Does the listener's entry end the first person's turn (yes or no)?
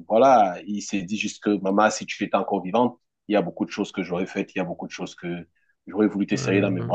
no